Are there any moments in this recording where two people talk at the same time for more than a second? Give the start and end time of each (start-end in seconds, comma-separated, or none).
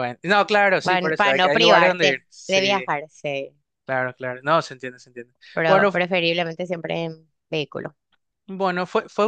0.8-2.9